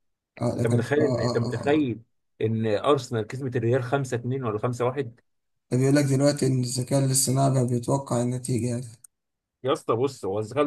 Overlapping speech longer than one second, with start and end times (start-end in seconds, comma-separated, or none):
0.6-1.9